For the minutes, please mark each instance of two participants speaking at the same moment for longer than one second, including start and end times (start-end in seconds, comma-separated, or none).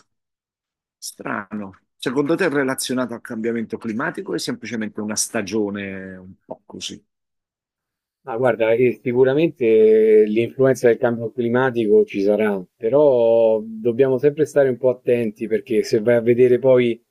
none